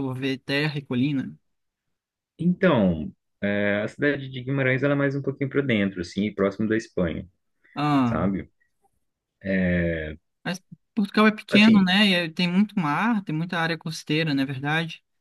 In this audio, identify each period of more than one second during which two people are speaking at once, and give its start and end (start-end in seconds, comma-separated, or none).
none